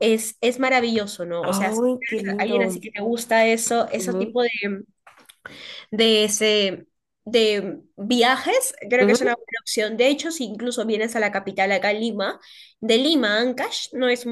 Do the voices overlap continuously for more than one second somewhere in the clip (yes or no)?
yes